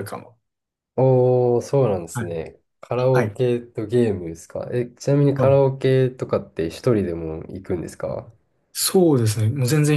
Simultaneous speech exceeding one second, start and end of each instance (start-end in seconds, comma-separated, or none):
none